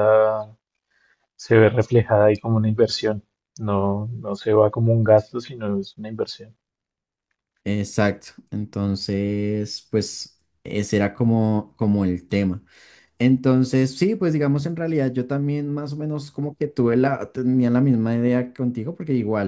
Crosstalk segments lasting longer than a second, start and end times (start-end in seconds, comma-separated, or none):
none